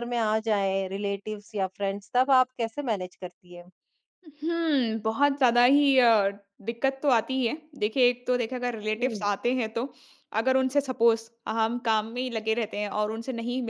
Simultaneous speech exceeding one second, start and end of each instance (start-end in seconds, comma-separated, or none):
none